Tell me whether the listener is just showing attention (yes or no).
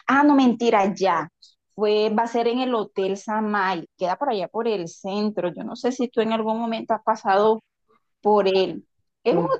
yes